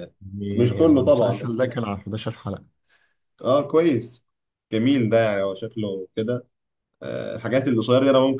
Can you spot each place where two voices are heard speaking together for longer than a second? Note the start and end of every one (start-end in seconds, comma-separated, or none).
0.5-1.8